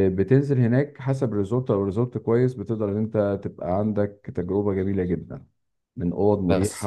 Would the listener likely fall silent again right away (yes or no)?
no